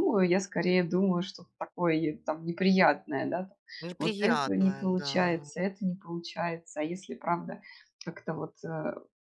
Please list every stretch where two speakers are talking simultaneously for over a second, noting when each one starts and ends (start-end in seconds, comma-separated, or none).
4.0-5.5